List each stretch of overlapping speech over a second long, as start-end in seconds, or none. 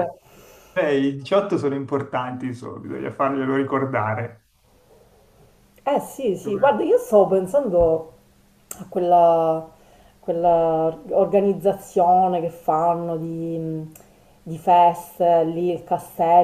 none